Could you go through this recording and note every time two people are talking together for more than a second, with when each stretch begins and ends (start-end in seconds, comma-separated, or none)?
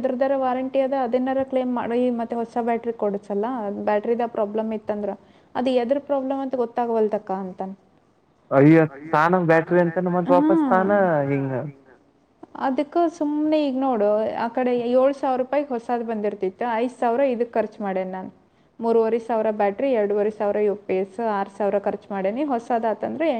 none